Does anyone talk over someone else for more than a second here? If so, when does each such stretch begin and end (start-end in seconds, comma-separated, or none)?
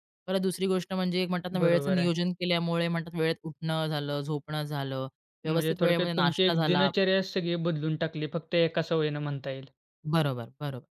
5.5-6.9